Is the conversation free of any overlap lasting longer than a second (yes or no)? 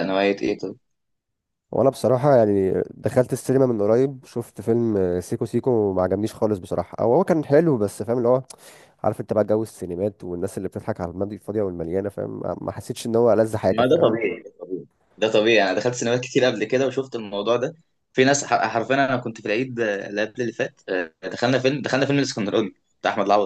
yes